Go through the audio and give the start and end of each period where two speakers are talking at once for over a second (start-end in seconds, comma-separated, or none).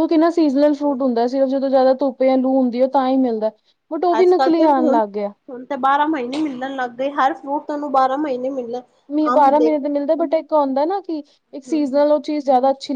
none